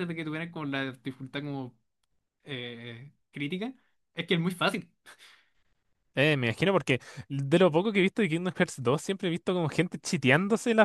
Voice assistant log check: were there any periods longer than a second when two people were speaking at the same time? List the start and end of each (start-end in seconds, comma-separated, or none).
none